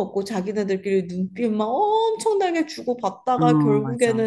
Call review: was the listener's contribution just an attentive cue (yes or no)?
yes